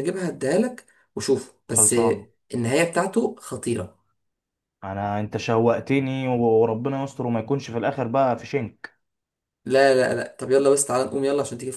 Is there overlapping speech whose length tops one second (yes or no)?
no